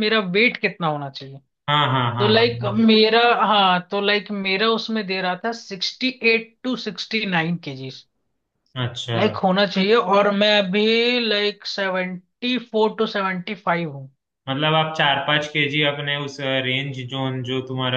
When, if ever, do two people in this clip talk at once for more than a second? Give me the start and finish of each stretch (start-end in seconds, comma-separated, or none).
none